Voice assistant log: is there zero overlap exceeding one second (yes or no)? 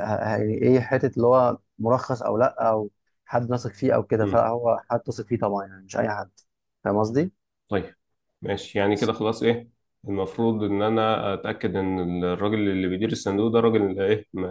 yes